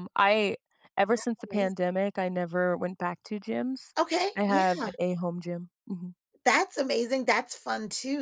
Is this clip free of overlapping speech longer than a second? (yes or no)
yes